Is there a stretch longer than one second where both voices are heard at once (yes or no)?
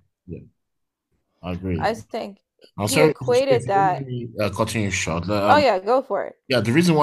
yes